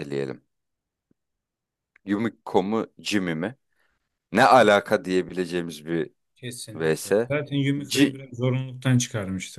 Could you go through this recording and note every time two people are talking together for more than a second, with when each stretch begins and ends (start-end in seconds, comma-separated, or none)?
none